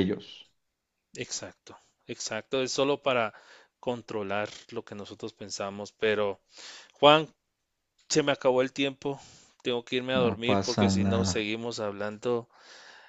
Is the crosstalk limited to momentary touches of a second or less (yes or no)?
no